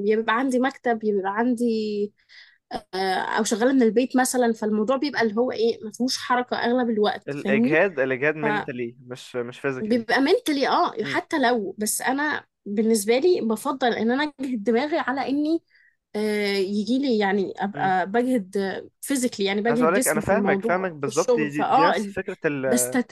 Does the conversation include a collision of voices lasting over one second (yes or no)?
yes